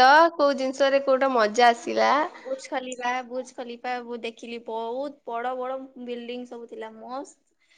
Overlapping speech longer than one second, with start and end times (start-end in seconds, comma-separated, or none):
none